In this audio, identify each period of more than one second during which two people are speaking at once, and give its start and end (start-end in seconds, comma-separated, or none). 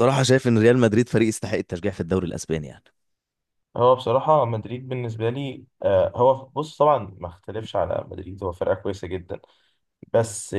none